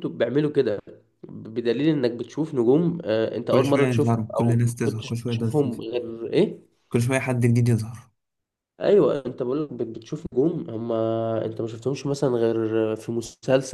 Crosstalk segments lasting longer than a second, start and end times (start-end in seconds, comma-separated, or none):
3.5-5.8